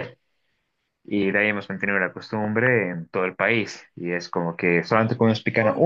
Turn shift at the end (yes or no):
no